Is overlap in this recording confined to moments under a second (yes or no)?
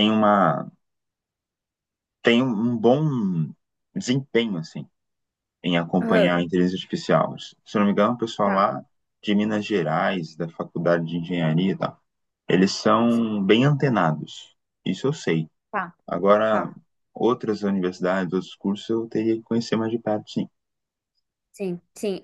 yes